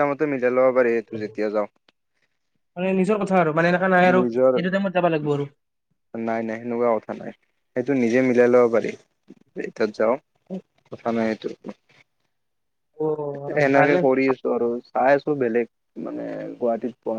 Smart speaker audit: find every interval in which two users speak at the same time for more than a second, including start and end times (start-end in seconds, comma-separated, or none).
none